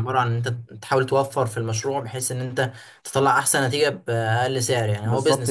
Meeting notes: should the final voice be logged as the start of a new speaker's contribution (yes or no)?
yes